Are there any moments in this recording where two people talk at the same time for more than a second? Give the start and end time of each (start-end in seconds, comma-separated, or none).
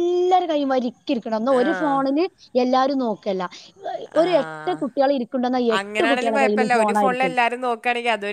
5.8-7.3